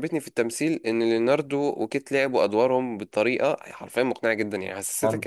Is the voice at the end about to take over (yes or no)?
no